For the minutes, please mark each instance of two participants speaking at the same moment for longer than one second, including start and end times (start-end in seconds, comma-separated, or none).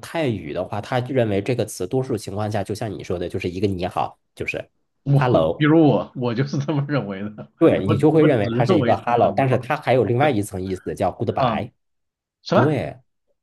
7.6-9.7